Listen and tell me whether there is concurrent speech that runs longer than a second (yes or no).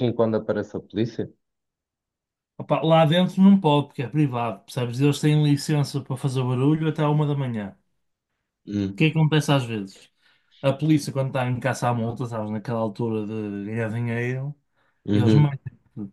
no